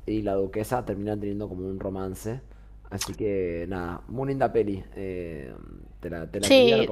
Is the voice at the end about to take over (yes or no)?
no